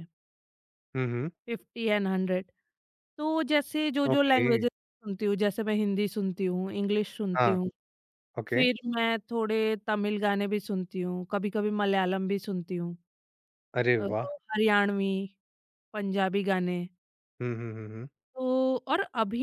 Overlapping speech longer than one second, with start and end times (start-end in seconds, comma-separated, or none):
none